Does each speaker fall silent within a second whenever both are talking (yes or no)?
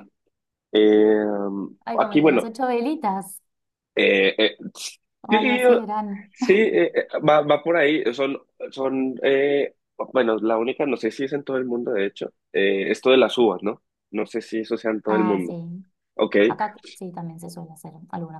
yes